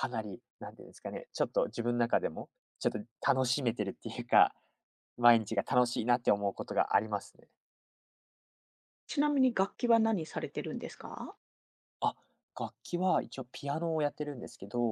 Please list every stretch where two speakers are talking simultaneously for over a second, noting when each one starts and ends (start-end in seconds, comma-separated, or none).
none